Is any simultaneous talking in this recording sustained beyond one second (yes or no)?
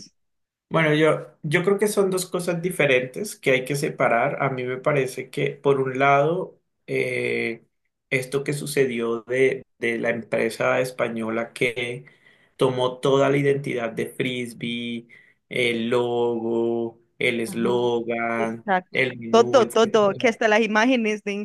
yes